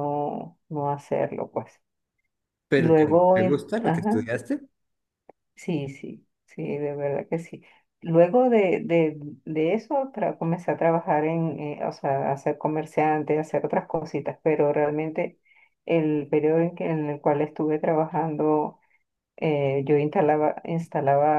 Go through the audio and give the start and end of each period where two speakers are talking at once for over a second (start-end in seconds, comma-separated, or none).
2.8-4.3